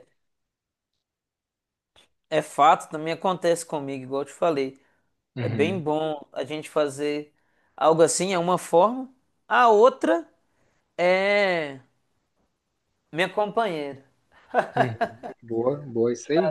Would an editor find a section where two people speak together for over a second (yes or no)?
no